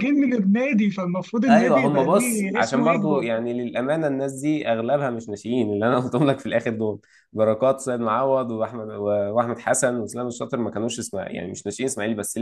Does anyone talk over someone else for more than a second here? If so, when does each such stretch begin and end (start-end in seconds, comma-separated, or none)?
1.5-3.3